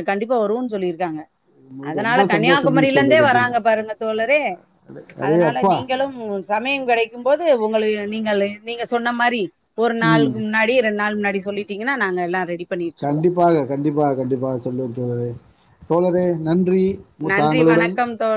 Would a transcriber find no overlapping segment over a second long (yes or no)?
no